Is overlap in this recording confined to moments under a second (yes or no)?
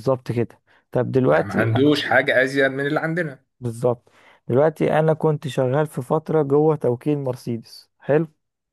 yes